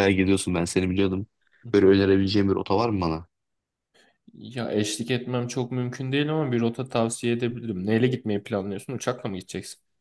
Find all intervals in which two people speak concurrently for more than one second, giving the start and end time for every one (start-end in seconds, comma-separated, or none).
none